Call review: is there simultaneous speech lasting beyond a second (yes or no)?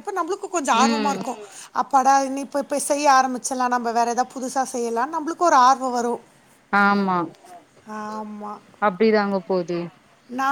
no